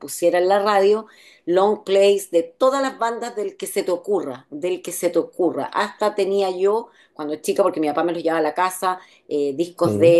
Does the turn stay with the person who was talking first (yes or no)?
yes